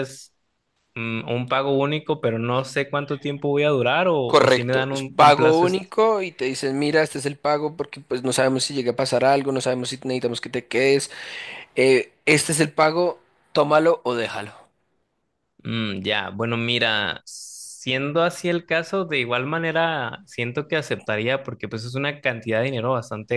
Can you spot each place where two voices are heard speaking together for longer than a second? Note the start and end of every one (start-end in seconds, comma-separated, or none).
4.2-5.7